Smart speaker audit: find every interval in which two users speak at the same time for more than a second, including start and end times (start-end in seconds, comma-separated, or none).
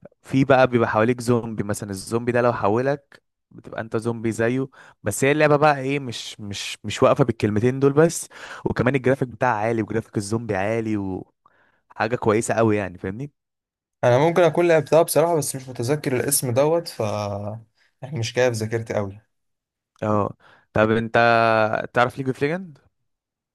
none